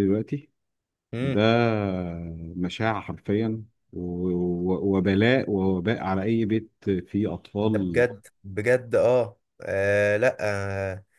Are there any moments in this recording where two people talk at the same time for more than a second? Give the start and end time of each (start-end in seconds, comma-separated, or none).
none